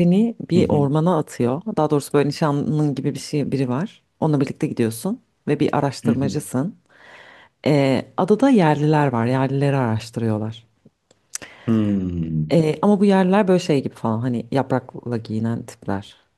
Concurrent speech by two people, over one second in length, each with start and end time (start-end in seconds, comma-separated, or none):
none